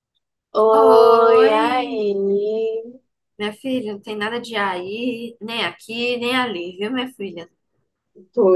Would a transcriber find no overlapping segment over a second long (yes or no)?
no